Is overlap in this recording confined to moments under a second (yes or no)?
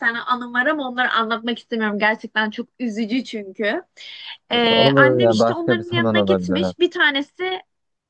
no